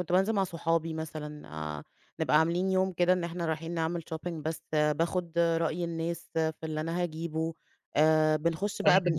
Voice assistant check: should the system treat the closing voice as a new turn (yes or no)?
no